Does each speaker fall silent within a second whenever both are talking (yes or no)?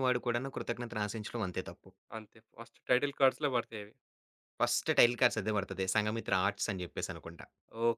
yes